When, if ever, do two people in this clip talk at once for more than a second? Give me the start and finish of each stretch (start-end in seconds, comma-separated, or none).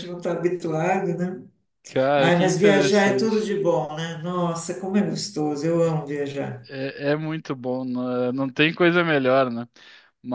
2.2-3.5